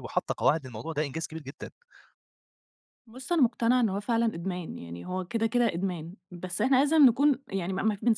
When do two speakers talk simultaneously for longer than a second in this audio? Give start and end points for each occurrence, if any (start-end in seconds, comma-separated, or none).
none